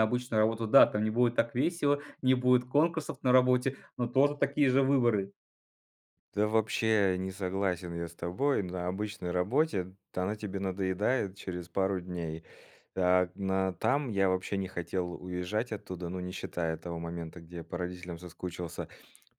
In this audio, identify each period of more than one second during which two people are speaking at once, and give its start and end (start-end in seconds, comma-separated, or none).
none